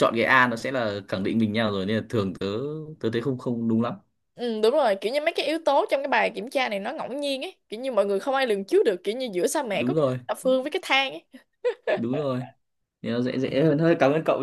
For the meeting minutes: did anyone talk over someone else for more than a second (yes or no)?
no